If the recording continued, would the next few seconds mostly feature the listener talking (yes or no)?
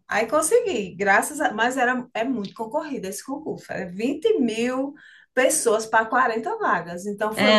yes